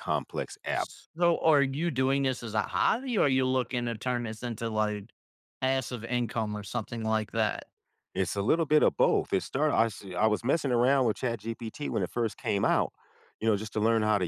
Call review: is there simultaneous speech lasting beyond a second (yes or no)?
no